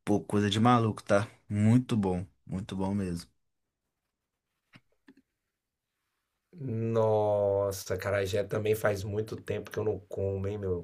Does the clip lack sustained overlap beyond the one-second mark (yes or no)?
yes